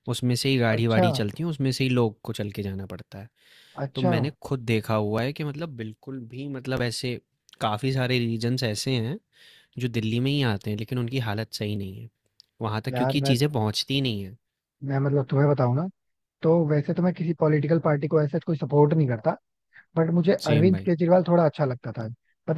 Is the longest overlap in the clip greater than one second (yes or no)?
no